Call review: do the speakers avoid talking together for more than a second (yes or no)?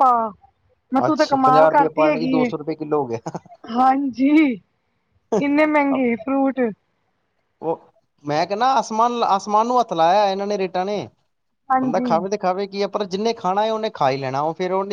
no